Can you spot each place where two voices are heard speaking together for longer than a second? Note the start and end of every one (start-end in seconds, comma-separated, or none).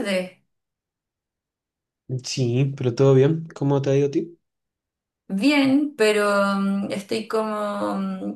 none